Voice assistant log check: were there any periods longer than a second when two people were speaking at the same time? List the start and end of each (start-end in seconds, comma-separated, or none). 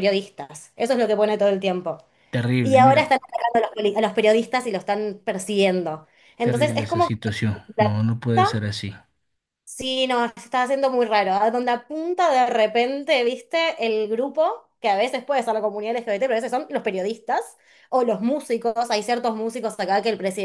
6.4-7.8